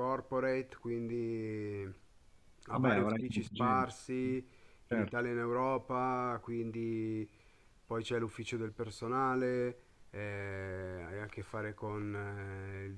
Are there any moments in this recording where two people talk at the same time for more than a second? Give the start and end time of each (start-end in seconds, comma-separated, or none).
2.7-3.9